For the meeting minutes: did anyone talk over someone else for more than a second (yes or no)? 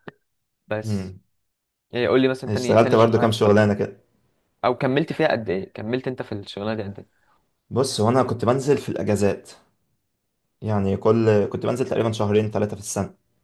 yes